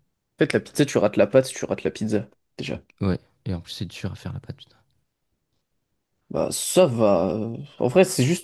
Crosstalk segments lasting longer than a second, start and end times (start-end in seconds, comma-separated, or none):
none